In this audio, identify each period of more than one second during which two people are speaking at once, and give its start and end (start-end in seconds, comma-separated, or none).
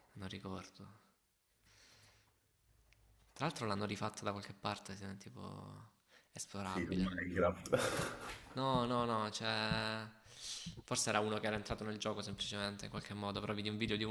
none